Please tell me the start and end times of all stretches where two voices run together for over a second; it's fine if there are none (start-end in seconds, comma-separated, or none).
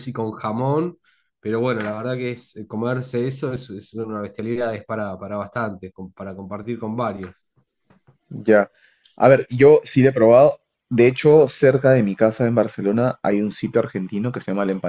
none